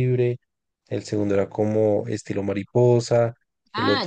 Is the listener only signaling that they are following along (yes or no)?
no